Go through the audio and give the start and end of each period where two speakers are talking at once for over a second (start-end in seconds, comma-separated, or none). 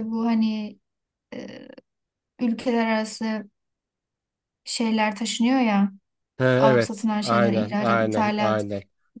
6.6-8.7